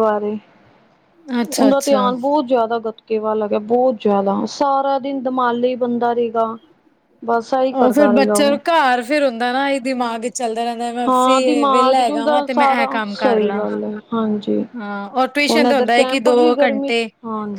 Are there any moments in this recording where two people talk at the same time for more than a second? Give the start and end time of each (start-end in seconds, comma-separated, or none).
11.7-13.6, 15.5-17.0